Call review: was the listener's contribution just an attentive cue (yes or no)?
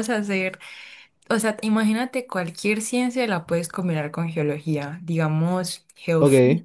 yes